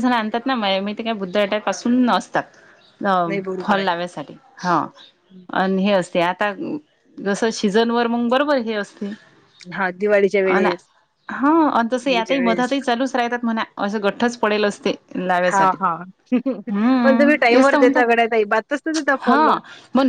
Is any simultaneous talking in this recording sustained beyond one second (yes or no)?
yes